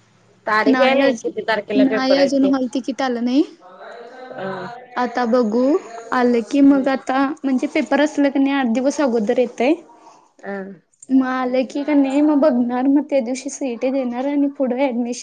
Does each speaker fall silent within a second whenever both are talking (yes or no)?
no